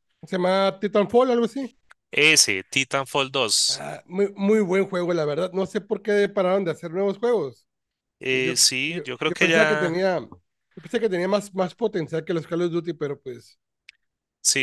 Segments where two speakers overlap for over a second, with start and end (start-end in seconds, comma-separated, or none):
8.3-10.0